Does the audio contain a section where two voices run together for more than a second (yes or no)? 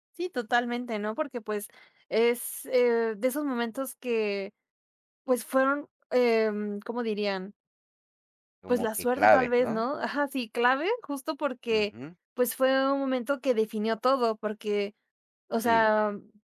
yes